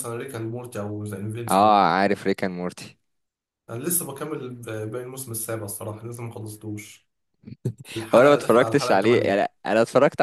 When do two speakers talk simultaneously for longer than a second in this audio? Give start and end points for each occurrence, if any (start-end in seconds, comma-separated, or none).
8.1-9.4